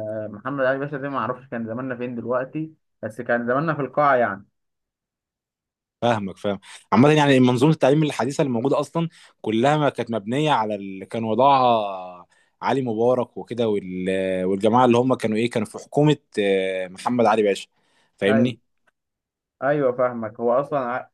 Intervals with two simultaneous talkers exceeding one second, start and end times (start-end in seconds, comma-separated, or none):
none